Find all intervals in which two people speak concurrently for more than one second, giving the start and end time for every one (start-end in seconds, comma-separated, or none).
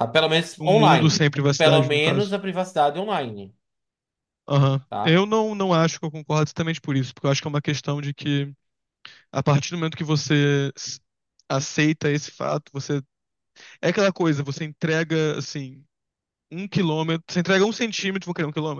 0.6-2.4